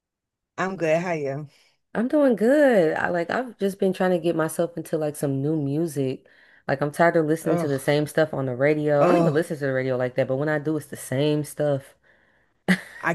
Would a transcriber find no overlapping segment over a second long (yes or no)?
yes